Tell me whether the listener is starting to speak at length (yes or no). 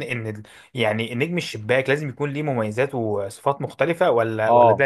yes